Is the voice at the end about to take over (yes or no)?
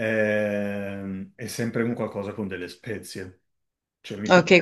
yes